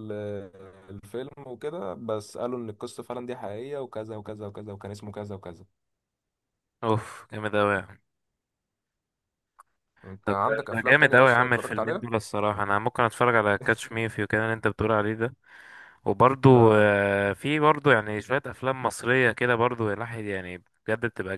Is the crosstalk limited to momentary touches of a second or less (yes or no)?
no